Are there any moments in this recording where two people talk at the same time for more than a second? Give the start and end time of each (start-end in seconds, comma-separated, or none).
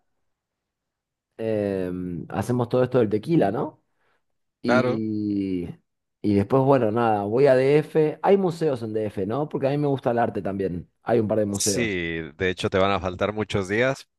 none